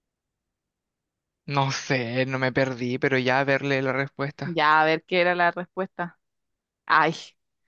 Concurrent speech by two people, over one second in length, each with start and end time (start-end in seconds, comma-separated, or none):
none